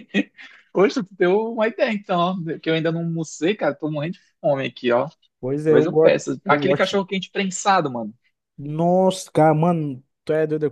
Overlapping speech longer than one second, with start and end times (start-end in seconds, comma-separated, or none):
5.7-7.0